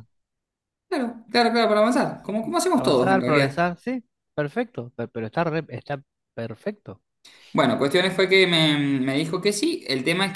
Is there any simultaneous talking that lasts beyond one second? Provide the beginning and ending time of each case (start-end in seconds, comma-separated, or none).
2.1-3.7